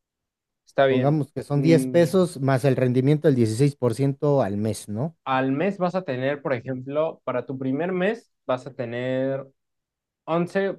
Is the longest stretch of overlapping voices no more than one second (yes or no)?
no